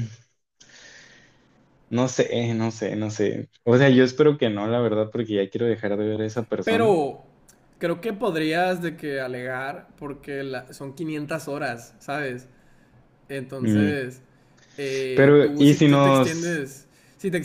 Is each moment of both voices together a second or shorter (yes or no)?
no